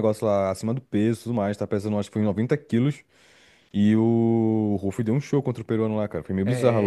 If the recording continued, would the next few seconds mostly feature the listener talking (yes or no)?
yes